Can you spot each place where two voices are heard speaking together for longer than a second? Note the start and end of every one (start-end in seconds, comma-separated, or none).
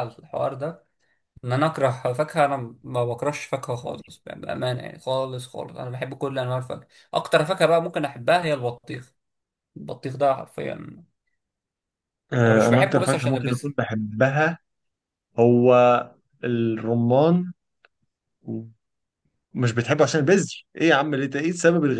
12.4-13.6